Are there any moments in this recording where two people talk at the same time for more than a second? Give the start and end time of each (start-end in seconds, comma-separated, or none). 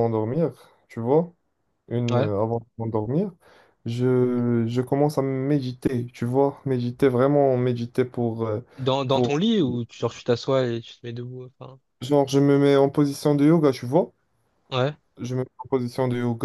none